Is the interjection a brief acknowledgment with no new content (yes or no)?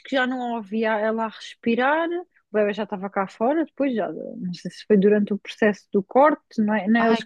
yes